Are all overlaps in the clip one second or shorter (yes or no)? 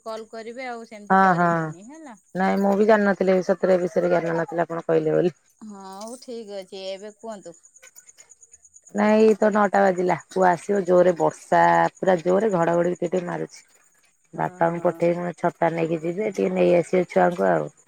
yes